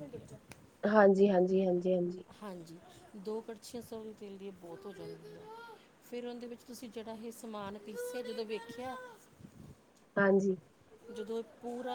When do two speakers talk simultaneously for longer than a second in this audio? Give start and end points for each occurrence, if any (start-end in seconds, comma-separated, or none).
none